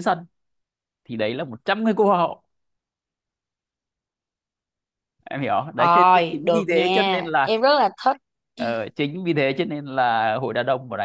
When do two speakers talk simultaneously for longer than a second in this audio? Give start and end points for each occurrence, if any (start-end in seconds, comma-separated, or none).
5.8-7.6